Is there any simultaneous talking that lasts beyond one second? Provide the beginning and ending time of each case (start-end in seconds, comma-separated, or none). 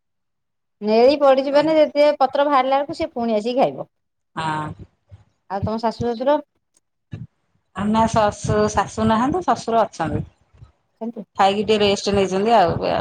none